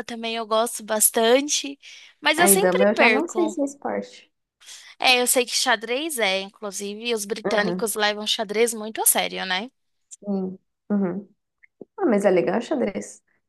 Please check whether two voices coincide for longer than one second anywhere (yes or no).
yes